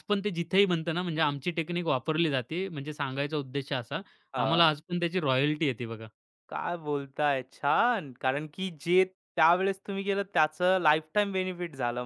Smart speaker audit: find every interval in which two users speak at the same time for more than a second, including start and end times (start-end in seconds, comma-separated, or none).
none